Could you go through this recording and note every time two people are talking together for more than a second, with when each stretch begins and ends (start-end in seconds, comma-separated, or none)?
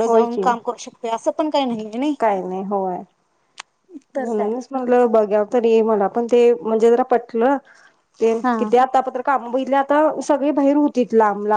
none